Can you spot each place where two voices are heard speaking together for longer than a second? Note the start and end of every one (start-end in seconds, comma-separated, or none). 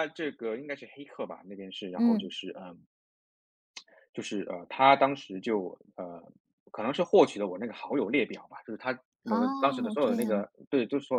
9.2-10.5